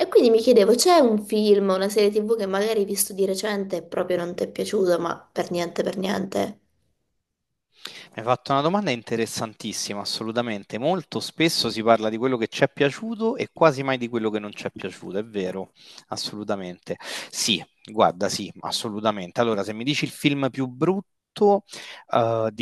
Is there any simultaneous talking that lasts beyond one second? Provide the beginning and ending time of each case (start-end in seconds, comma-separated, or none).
none